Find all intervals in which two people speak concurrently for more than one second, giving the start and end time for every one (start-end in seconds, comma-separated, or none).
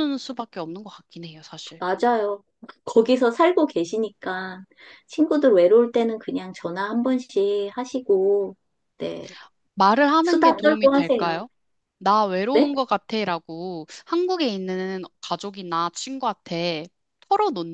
10.2-11.4